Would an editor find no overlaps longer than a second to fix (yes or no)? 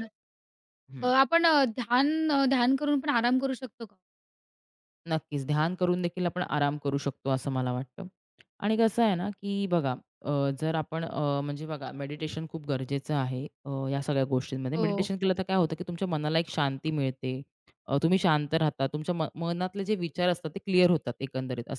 yes